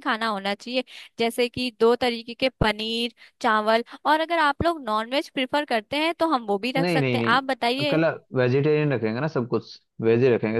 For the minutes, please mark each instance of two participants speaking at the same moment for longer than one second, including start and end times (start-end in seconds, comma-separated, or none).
6.8-8.0